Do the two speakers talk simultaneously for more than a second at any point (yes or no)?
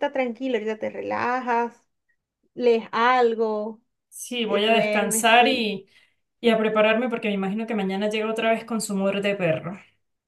yes